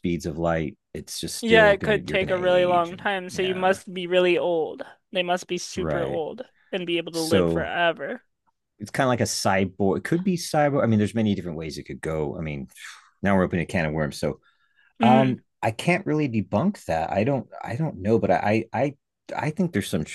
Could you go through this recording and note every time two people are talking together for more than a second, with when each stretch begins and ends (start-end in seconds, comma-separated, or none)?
1.4-3.8